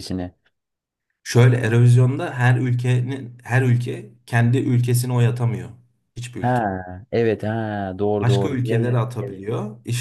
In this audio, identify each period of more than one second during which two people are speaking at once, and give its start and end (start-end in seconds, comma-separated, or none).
8.2-9.4